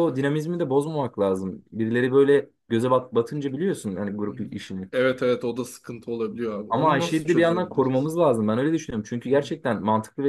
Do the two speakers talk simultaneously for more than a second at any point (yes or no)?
yes